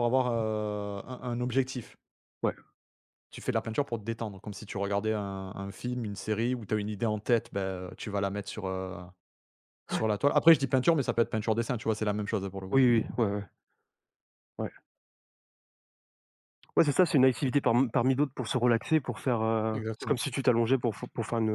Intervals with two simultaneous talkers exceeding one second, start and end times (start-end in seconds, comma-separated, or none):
none